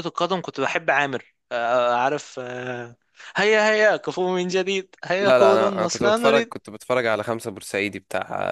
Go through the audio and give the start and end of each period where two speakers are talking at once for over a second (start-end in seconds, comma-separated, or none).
5.2-6.5